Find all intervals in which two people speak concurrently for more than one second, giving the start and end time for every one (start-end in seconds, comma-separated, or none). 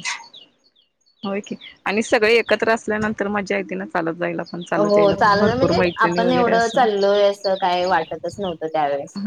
4.9-6.8